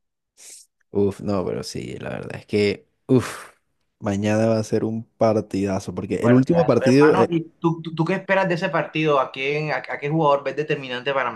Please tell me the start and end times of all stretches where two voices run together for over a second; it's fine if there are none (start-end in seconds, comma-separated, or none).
6.1-7.4